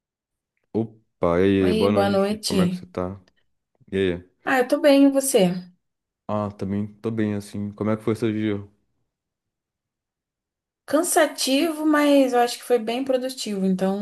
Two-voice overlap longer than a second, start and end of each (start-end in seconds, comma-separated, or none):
1.6-2.9